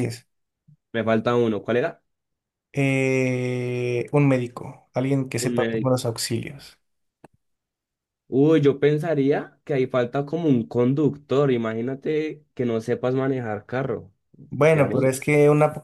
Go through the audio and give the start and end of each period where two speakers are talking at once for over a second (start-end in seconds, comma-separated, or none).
none